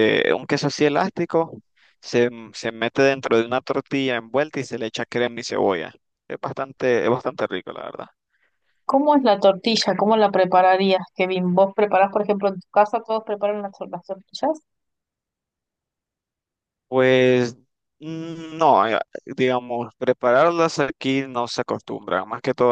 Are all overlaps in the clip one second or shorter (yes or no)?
yes